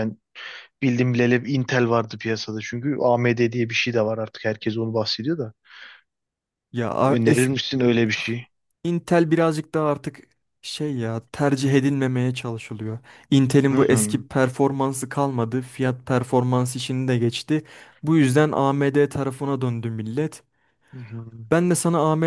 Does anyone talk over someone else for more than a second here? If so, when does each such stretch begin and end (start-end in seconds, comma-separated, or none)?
none